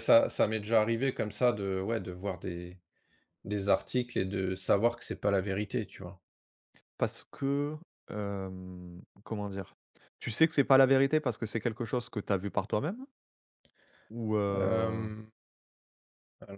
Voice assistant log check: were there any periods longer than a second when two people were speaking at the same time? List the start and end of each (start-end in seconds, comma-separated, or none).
none